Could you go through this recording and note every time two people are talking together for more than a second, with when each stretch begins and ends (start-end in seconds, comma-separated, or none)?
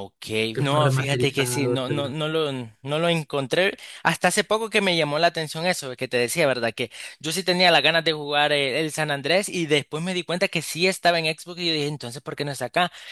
0.5-2.1